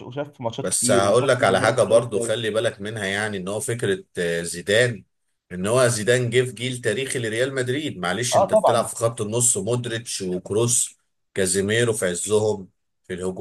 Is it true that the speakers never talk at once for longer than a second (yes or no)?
no